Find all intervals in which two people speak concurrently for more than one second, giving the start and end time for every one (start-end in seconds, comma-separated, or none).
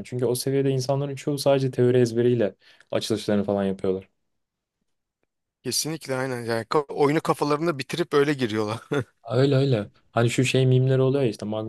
none